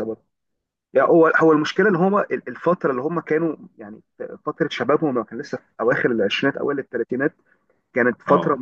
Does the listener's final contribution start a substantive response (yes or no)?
no